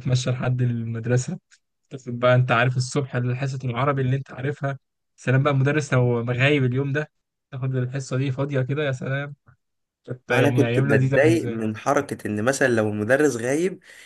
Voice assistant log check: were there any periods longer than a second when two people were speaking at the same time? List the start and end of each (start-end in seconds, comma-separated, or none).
10.3-11.6